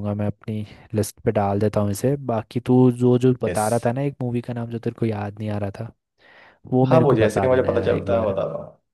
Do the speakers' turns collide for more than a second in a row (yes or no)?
yes